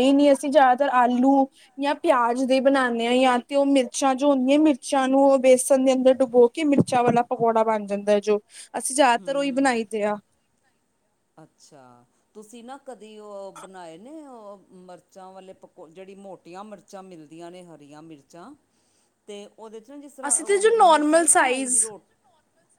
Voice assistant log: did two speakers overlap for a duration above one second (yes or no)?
yes